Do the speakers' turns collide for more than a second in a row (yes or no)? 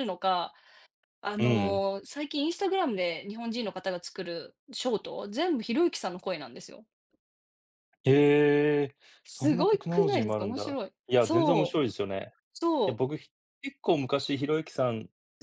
yes